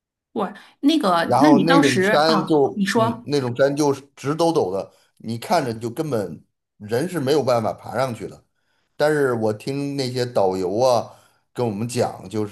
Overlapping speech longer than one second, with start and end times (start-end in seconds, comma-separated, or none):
1.2-3.3